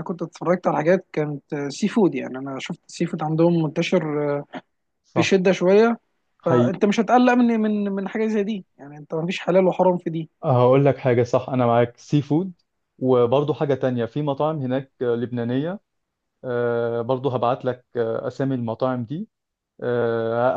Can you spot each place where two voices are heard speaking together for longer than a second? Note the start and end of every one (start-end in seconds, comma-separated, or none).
none